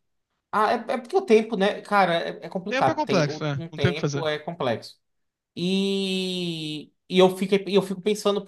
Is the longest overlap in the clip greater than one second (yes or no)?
yes